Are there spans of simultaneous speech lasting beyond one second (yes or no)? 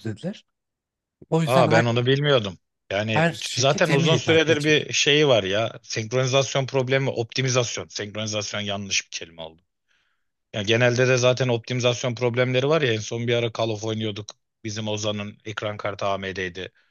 yes